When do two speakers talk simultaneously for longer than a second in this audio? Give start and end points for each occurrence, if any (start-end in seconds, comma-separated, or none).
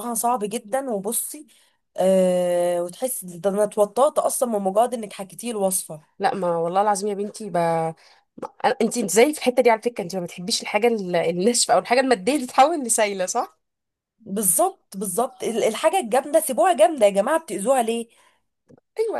none